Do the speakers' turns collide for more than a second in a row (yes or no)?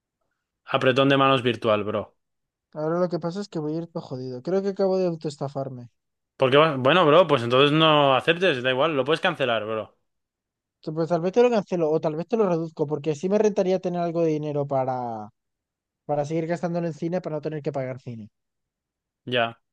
no